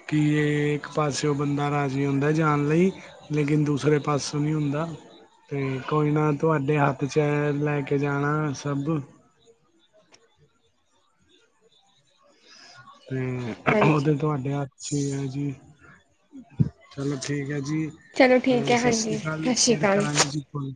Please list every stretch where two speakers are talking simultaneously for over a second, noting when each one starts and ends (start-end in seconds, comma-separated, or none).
18.2-20.1